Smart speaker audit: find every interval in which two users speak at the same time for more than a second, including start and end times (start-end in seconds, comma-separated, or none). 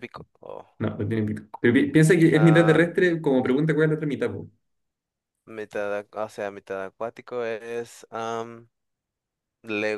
none